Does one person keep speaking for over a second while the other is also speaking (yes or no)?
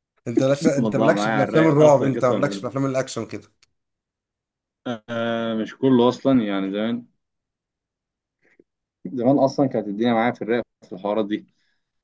yes